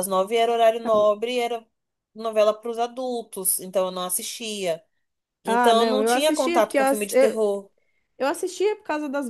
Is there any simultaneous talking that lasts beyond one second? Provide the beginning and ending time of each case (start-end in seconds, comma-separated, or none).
5.5-7.4